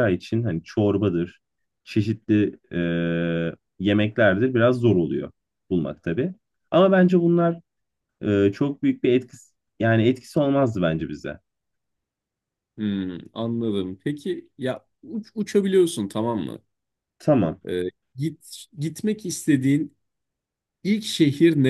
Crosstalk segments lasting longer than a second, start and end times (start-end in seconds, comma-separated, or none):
none